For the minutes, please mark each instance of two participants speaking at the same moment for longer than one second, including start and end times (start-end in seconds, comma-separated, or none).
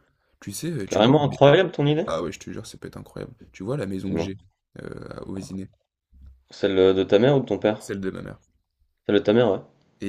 none